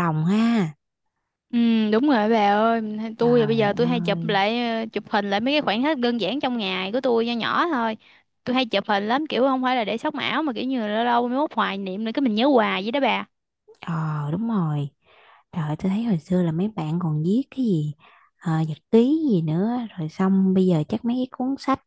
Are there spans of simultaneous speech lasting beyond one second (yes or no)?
yes